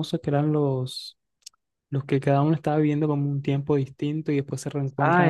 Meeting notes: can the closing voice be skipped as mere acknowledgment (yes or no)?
no